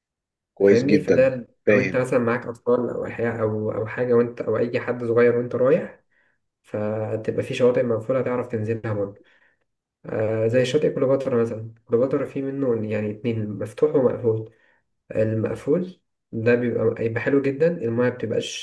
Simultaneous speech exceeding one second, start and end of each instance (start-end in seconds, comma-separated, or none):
0.7-2.0